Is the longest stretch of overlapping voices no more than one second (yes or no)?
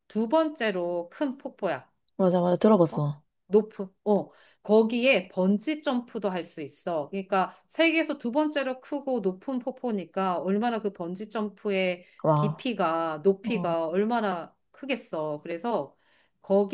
yes